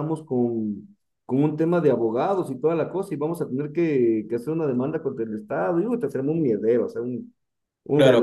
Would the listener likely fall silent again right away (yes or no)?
no